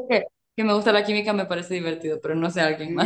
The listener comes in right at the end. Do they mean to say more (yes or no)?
yes